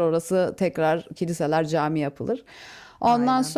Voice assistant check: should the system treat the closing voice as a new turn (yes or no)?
no